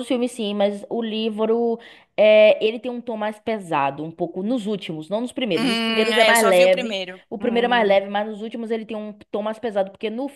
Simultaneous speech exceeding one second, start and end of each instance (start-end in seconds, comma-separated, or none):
5.5-7.9